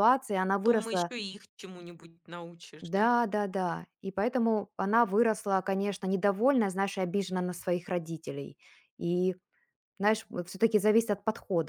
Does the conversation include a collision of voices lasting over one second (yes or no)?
no